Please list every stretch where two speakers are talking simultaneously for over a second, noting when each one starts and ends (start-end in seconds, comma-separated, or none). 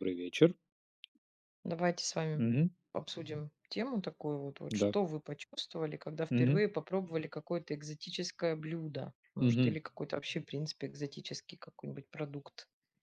none